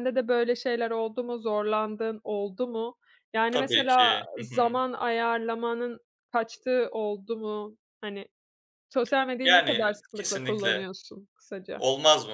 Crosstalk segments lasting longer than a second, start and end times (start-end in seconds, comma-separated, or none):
3.5-4.8, 9.4-10.8